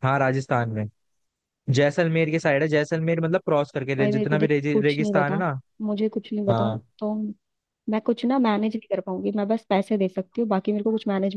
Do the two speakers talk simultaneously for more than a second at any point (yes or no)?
yes